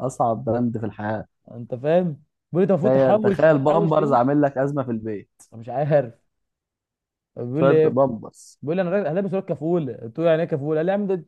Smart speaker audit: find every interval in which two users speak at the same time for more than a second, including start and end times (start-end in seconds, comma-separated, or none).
2.8-4.2